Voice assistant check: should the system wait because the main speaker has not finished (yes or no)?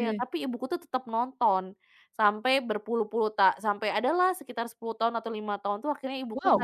yes